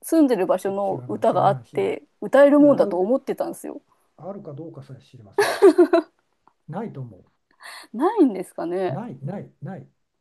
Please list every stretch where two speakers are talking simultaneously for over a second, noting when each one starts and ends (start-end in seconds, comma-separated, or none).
0.6-2.0